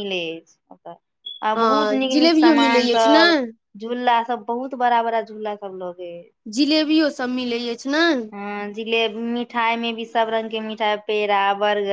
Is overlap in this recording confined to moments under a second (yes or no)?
no